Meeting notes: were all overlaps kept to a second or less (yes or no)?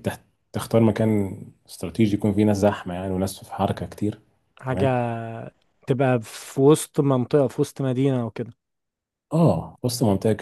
yes